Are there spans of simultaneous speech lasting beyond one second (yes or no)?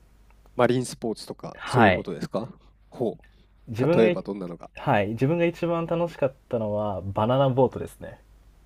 no